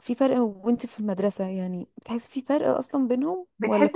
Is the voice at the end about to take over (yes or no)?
yes